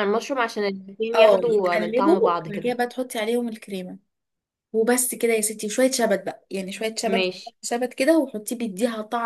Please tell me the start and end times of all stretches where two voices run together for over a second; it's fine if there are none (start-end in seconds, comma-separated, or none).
1.1-2.8